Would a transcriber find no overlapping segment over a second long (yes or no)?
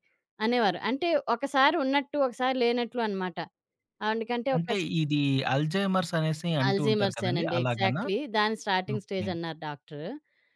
no